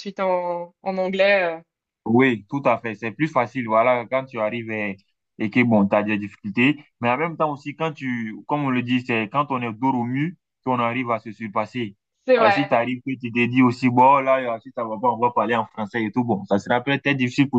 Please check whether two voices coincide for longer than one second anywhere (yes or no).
no